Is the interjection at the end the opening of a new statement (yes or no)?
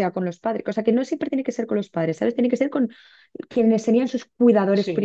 yes